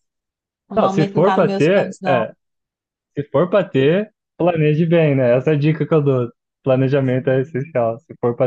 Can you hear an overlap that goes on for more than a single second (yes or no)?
yes